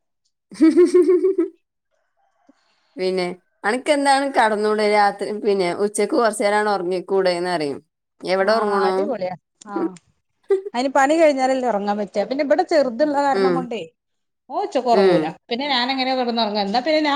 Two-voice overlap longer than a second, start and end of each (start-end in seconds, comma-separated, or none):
none